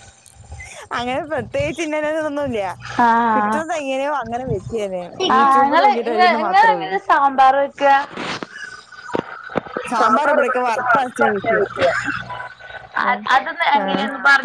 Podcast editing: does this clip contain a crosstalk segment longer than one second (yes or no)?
yes